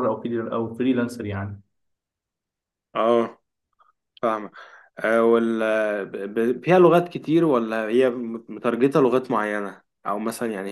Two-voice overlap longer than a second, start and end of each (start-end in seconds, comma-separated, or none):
none